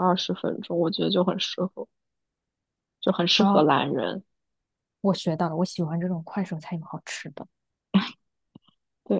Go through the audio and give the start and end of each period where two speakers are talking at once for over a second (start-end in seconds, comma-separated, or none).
none